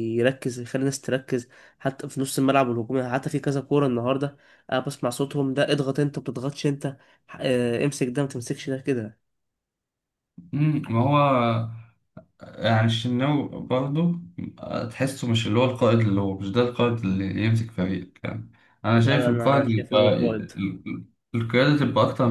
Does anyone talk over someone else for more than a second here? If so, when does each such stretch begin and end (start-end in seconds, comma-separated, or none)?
18.9-20.5